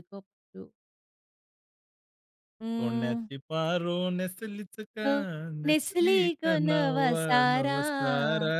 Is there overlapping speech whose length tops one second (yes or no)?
yes